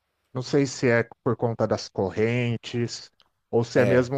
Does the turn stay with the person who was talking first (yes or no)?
yes